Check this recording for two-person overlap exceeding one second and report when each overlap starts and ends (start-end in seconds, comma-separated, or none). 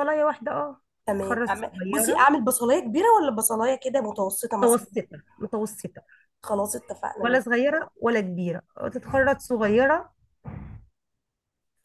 1.1-2.3